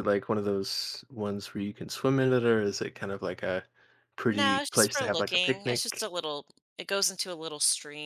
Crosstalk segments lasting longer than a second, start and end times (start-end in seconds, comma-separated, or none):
4.2-6.1